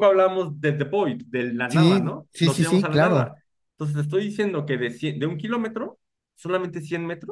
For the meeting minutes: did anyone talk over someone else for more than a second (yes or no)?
yes